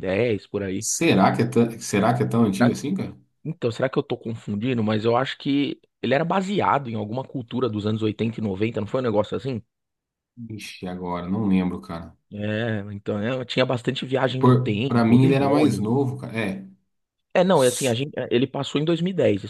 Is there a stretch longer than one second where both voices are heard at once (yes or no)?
yes